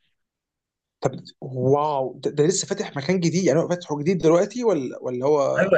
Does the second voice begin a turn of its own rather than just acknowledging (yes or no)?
yes